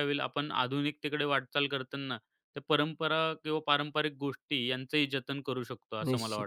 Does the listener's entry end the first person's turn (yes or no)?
yes